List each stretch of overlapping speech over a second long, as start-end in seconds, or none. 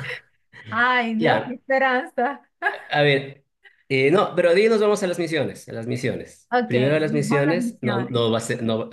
6.5-8.2